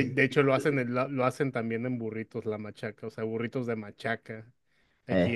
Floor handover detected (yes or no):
no